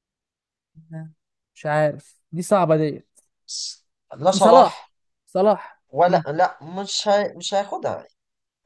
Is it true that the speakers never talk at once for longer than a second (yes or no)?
yes